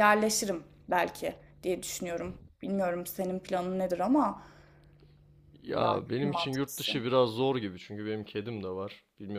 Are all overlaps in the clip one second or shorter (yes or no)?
no